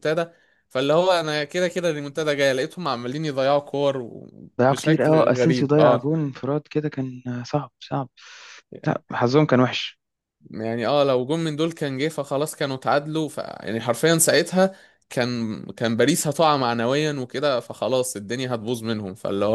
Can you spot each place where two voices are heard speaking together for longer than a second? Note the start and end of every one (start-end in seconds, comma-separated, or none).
4.6-6.1